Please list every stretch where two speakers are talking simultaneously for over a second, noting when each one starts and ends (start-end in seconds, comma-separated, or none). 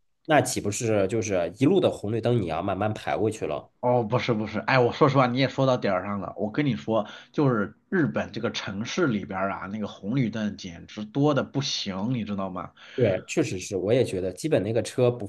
none